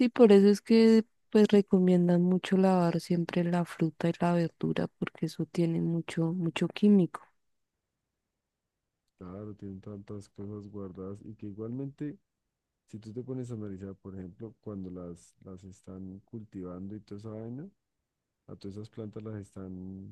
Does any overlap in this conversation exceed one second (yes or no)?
no